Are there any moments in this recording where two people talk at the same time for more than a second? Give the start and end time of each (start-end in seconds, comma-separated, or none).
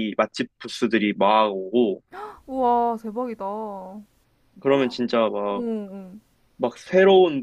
none